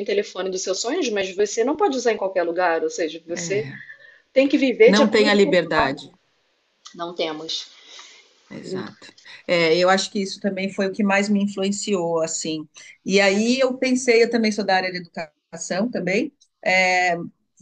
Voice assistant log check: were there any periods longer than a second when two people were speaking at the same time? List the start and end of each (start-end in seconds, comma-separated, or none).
4.8-6.1